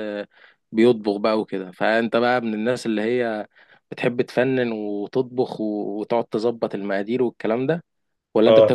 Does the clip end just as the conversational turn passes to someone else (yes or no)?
yes